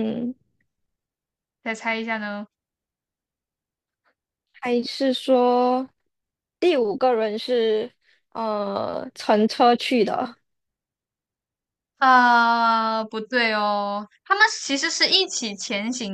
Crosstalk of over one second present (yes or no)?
no